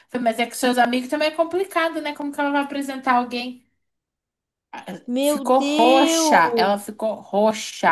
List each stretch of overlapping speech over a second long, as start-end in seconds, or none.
5.0-6.8